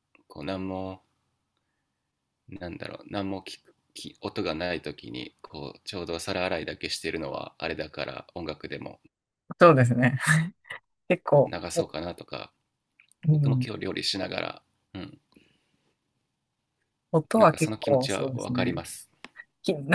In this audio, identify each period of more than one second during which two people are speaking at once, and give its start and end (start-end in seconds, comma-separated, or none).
17.4-18.8